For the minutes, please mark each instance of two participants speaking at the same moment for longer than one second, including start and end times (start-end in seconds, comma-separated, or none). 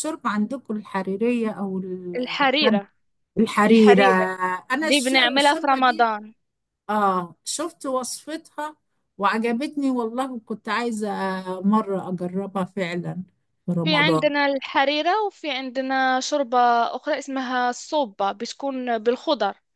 4.8-6.1